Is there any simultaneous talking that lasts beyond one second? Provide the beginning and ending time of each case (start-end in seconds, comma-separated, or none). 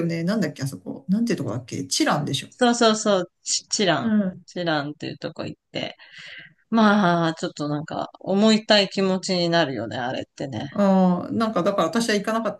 none